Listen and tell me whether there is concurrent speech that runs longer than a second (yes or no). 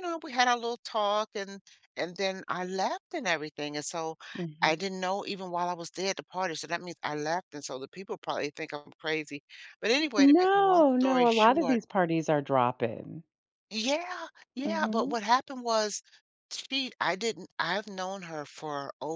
yes